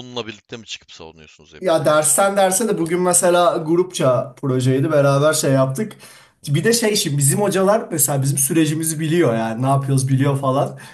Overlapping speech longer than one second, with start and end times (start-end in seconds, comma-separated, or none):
none